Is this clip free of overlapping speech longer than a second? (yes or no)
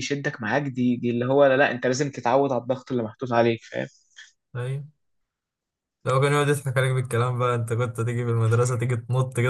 yes